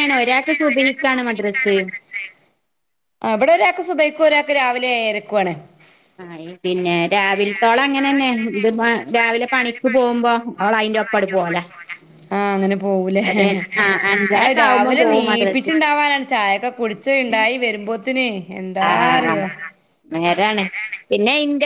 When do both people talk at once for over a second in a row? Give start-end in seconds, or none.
14.4-15.8